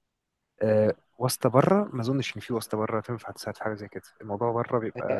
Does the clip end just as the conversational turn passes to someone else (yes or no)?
yes